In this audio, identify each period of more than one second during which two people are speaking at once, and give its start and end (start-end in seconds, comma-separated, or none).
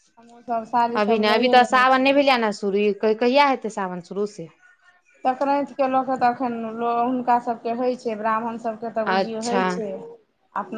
1.0-3.1